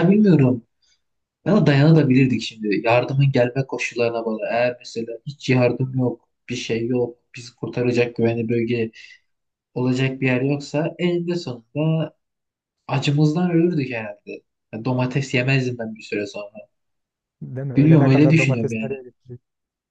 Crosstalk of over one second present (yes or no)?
yes